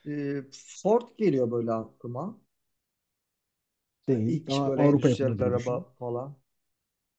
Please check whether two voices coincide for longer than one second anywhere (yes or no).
yes